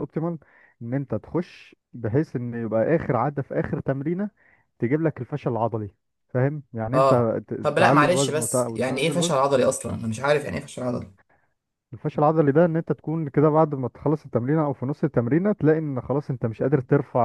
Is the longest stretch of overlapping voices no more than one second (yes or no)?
no